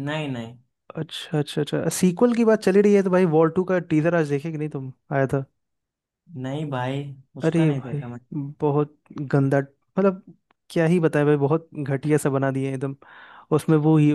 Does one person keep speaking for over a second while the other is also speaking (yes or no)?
no